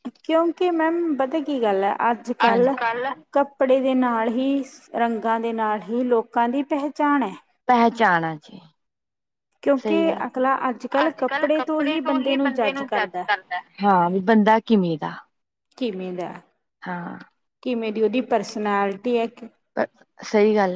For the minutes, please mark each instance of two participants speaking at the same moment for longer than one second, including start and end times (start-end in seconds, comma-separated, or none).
none